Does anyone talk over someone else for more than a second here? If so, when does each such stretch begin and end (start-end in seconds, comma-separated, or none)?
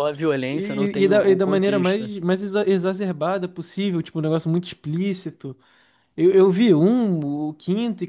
0.5-2.1